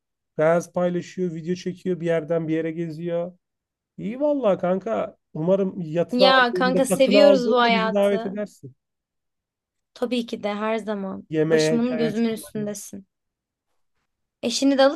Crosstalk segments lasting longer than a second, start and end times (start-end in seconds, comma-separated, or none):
6.1-8.3, 11.3-12.7